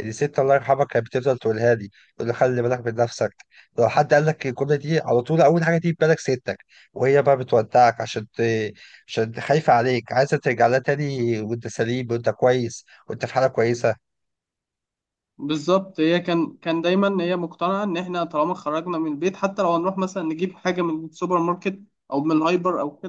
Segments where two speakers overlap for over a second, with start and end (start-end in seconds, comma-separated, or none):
none